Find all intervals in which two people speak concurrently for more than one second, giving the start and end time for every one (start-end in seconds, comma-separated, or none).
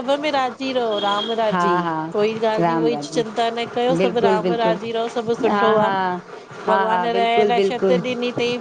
4.0-5.9, 6.7-8.0